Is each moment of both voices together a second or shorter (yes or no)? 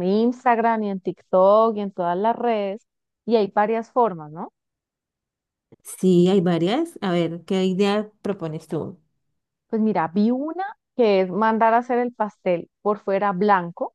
yes